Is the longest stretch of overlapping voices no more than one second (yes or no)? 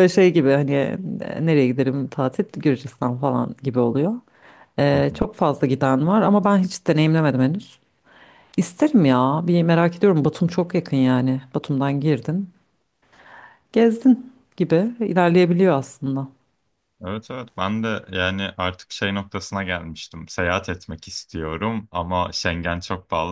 yes